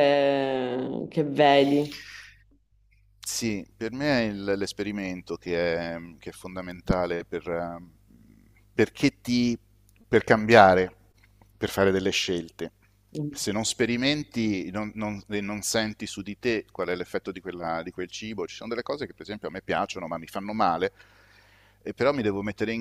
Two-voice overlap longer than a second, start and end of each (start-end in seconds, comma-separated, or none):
none